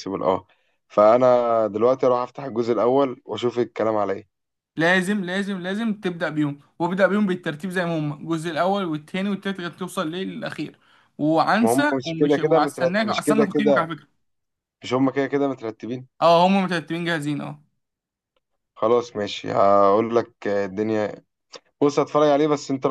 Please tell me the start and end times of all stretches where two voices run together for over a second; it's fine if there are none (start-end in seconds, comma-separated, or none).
11.6-13.9